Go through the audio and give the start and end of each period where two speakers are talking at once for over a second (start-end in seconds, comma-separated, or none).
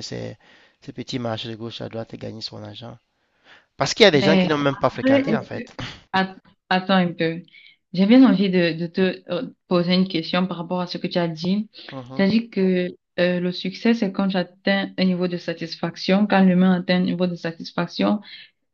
4.1-5.6